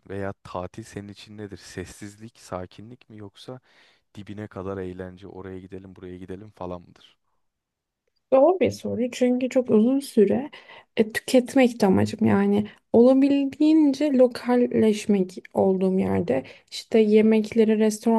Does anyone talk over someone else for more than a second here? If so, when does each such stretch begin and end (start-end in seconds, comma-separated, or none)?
none